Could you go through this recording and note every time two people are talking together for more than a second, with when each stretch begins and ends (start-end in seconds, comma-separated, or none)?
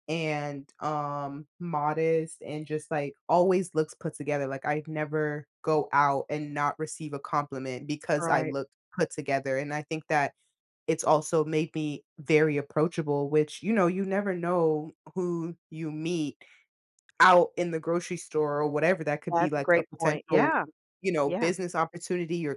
19.3-20.5